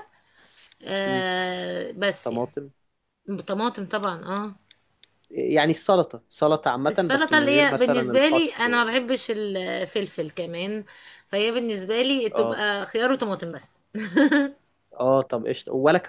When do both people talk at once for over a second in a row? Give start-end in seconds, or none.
6.9-8.8